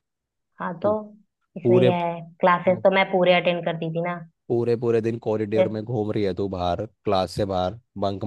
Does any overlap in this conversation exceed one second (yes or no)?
no